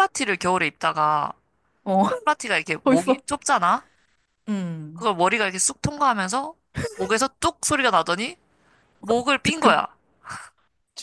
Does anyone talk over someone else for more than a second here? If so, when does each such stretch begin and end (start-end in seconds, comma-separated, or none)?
none